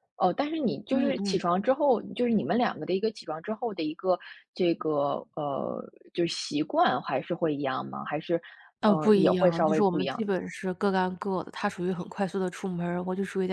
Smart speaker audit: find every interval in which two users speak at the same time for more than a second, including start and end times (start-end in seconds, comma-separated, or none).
8.8-10.2